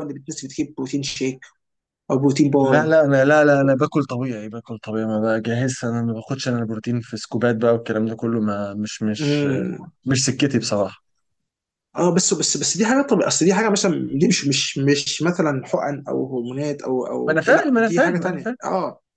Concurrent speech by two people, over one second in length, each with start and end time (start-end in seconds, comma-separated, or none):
17.3-18.6